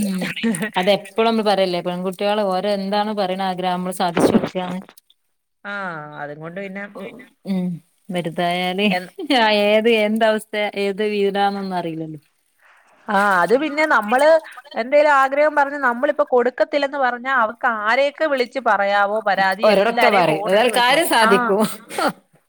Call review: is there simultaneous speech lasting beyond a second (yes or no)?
yes